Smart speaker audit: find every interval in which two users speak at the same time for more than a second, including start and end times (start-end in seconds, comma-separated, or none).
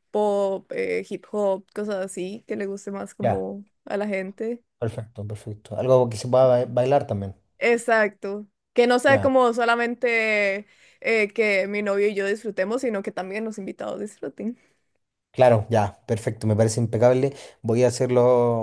none